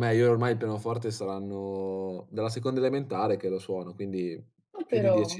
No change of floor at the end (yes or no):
yes